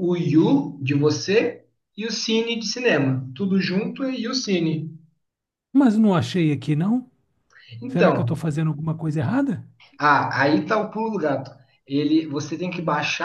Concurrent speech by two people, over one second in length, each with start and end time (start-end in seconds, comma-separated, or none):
none